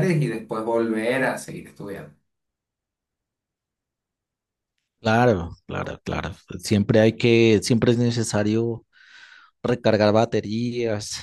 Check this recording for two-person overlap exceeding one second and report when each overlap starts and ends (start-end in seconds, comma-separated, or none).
none